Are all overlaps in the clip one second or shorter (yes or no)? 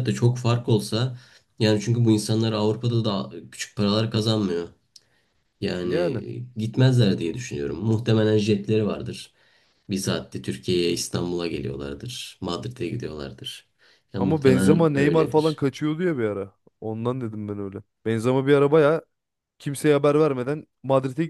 no